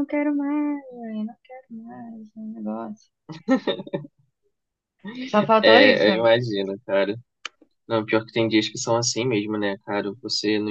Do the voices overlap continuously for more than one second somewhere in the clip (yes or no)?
no